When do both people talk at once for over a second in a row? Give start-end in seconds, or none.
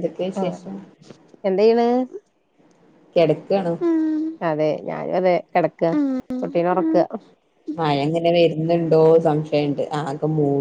none